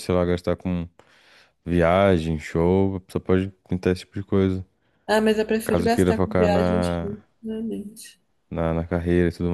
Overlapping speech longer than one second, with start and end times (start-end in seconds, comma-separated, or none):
5.6-7.0